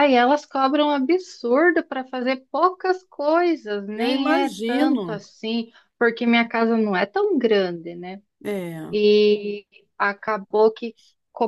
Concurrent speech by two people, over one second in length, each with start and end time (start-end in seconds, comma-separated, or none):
4.0-5.2